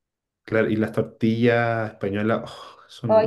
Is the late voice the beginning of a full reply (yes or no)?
yes